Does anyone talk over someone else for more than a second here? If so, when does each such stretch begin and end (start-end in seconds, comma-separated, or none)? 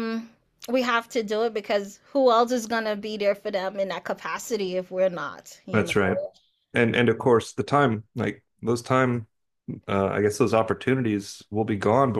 none